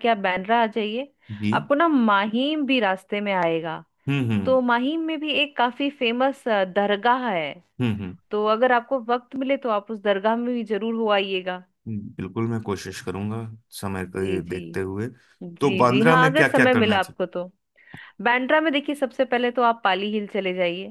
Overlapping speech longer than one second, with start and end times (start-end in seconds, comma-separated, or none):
15.6-17.0